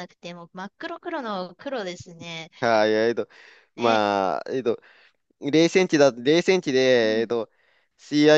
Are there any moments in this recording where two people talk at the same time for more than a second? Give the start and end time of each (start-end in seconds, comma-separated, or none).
none